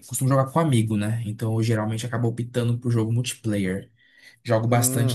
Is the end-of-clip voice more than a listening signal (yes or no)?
no